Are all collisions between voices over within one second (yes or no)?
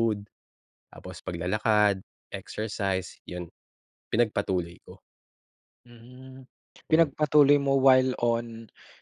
yes